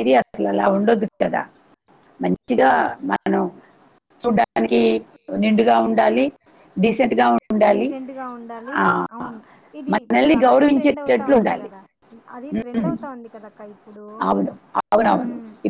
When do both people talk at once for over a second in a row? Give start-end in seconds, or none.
9.9-11.7